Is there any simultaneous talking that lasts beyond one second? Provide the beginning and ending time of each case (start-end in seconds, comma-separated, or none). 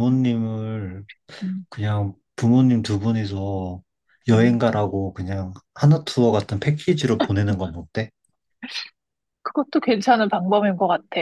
none